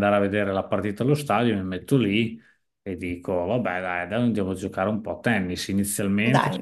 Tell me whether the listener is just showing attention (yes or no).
yes